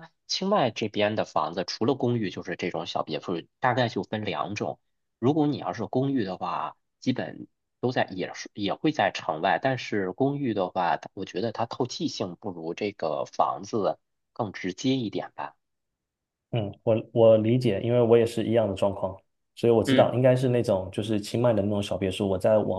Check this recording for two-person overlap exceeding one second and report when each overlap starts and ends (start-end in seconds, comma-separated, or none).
none